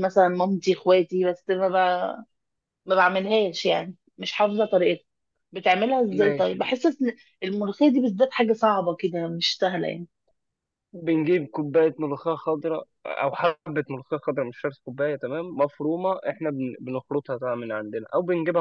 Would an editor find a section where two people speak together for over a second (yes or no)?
no